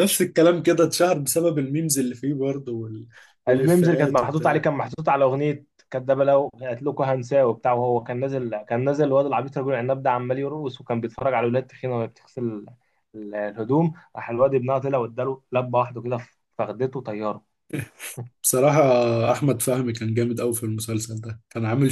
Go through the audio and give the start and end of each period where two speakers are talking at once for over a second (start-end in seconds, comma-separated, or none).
3.5-4.7